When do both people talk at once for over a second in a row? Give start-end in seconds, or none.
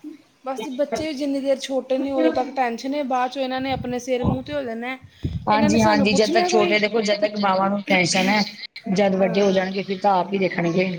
5.5-6.8